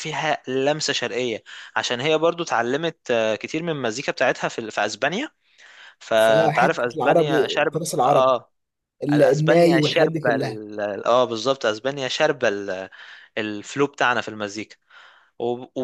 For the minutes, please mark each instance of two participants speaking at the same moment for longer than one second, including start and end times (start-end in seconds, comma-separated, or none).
6.1-8.4, 9.1-10.6